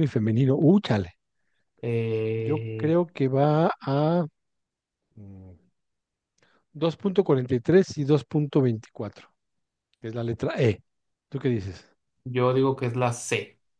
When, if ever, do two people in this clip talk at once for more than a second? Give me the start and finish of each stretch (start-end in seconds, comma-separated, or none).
none